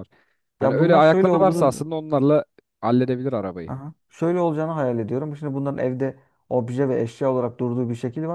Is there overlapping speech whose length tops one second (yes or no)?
yes